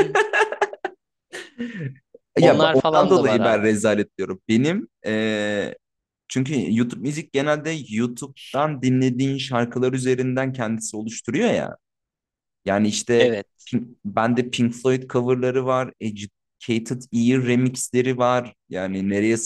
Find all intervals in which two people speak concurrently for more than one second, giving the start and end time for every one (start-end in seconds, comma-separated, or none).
2.4-3.6